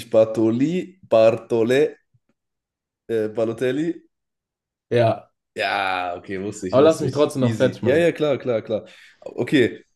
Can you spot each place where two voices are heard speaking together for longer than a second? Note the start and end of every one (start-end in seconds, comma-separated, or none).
6.7-8.1